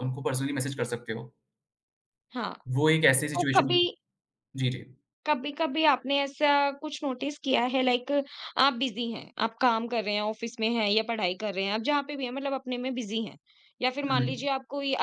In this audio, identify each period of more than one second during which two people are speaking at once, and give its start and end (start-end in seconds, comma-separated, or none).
none